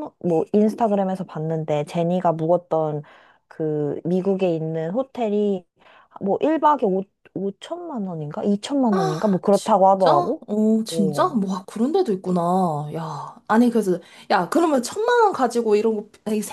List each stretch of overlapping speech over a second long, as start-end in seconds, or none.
8.9-10.1